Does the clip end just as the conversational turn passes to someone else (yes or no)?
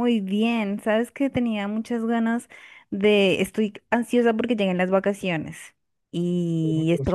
no